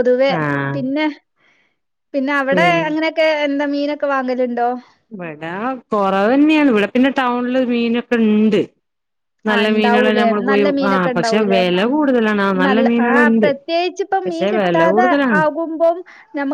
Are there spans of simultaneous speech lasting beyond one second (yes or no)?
yes